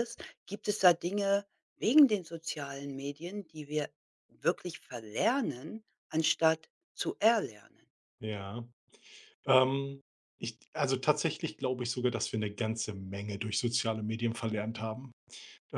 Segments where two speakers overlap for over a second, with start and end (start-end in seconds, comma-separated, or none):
none